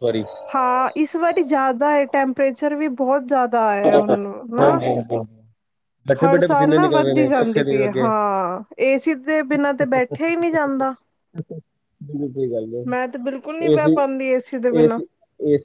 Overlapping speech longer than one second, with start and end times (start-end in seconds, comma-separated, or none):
6.2-8.1, 13.7-15.0